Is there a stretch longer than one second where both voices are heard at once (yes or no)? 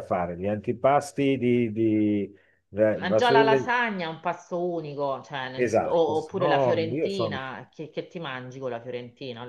yes